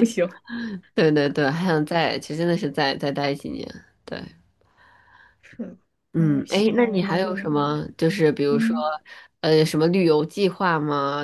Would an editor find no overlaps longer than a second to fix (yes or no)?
no